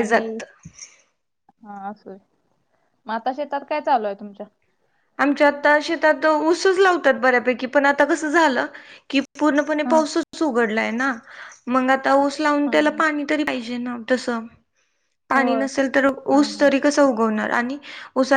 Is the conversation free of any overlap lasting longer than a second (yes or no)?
yes